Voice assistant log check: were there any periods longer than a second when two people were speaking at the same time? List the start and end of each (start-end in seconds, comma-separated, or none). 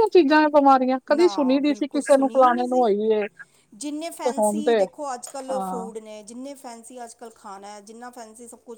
1.1-2.9